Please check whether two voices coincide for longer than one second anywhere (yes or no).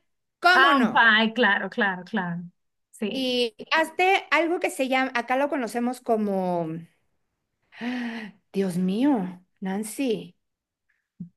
no